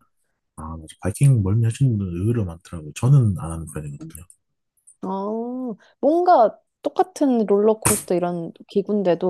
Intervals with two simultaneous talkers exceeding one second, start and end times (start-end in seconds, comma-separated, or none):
none